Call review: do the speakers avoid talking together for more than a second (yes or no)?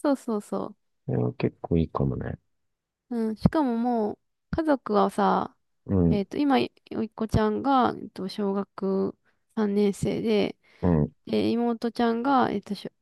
yes